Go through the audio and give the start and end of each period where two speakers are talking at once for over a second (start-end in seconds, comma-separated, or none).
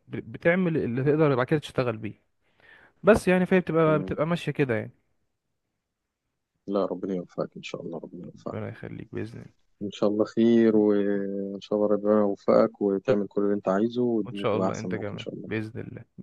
14.2-15.6